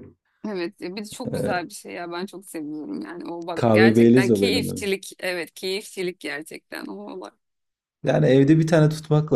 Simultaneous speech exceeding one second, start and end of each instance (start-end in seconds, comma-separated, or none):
3.5-4.8